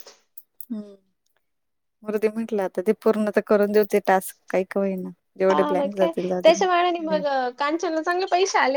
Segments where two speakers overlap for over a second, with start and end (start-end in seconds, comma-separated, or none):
5.5-7.2